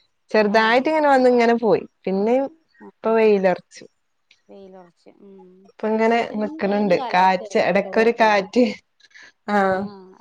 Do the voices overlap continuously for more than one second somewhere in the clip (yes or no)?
yes